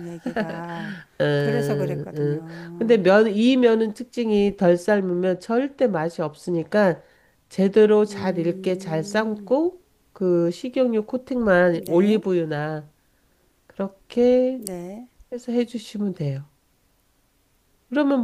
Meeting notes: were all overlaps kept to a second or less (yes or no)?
no